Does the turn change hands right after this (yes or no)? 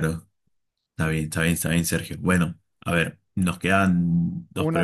no